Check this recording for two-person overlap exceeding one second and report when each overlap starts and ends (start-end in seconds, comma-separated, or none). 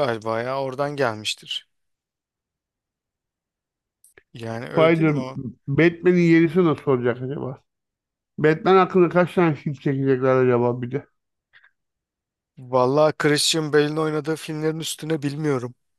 none